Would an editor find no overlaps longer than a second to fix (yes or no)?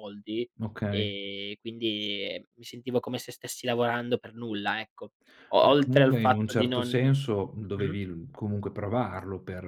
no